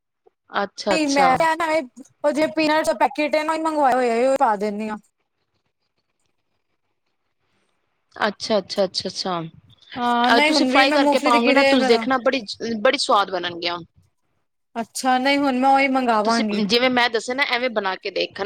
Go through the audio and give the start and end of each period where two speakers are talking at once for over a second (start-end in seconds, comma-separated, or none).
10.0-12.0